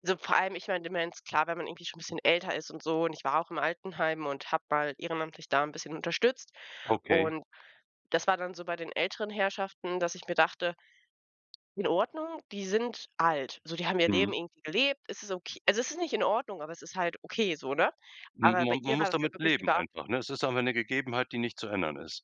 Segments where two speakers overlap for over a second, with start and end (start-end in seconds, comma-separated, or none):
18.4-19.9